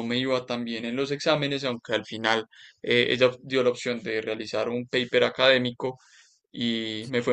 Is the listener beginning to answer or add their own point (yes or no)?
no